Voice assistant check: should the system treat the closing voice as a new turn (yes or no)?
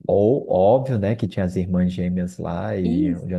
yes